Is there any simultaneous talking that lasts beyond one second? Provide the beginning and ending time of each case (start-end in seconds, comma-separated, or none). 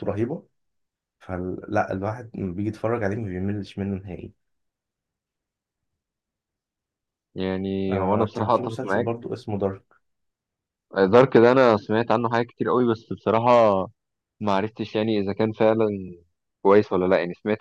7.9-9.3